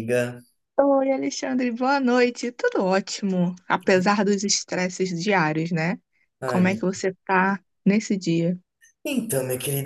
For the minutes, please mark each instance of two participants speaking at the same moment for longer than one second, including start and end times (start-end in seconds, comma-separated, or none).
none